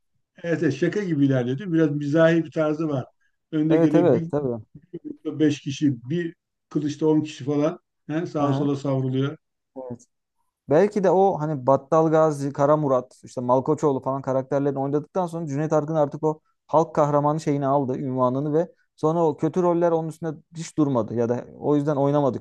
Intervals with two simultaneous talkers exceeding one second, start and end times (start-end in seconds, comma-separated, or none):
none